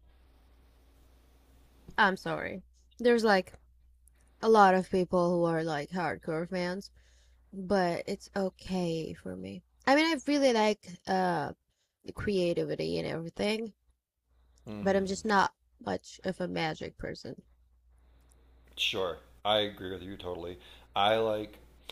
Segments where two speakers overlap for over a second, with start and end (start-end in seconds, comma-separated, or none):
none